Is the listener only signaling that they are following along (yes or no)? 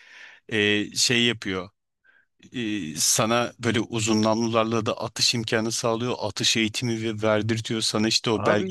no